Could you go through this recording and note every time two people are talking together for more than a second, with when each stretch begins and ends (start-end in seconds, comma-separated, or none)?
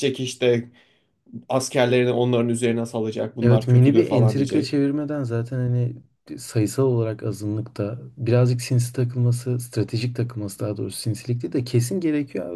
3.4-4.8